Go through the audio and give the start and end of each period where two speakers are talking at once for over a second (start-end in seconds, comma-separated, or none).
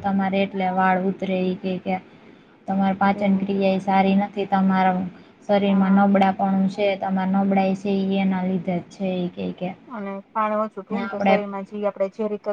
none